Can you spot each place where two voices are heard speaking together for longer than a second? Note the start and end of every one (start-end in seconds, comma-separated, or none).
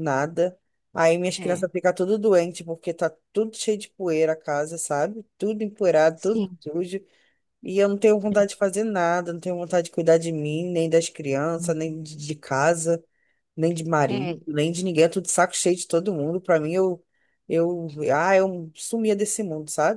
none